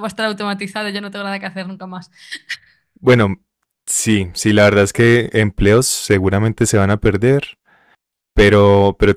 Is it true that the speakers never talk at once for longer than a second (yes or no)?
yes